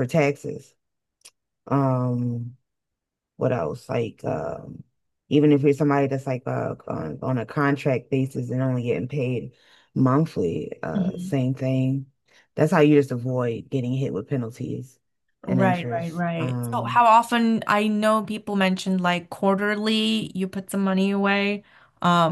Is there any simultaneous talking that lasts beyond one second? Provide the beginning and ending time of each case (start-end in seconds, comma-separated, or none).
15.5-17.0